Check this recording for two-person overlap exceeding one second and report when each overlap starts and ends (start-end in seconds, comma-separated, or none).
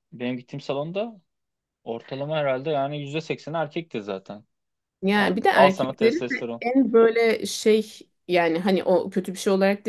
5.2-6.6